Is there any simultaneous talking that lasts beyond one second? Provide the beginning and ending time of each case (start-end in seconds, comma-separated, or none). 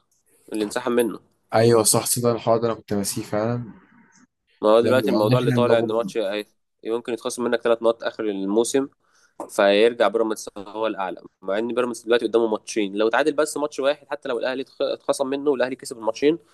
4.8-6.1